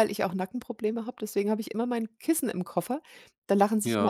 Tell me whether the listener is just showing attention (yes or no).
yes